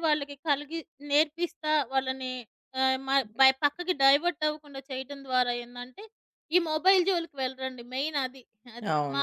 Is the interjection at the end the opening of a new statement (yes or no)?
yes